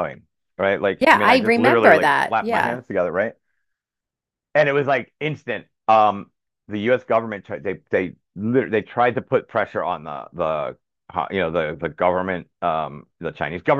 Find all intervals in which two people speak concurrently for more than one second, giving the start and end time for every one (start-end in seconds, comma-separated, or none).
1.0-2.8